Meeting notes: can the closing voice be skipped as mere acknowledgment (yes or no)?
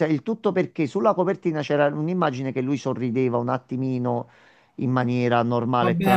no